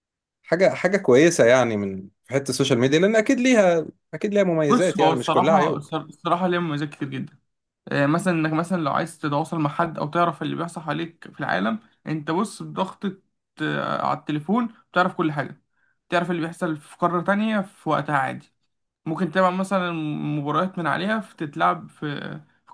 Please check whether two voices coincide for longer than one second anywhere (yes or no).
yes